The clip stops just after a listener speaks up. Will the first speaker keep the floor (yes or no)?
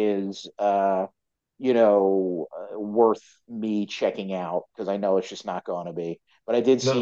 yes